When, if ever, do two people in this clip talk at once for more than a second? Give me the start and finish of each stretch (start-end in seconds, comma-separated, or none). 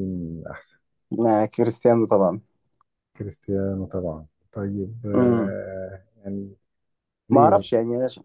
none